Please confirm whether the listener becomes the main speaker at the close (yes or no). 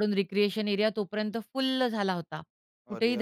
no